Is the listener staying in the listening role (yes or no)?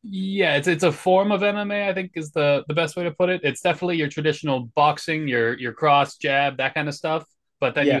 yes